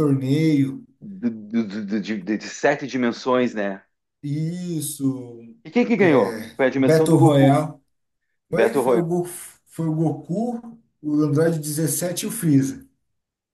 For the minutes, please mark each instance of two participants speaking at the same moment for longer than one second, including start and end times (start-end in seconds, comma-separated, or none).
6.0-7.6